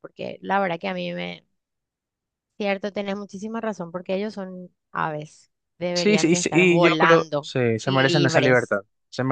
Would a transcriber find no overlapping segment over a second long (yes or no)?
no